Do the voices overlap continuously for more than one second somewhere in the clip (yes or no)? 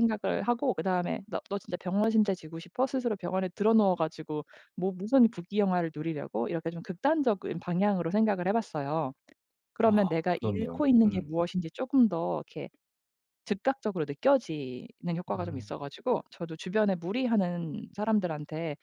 yes